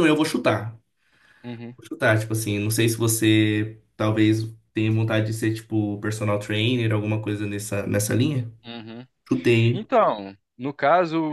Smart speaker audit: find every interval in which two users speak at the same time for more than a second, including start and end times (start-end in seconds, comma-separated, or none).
none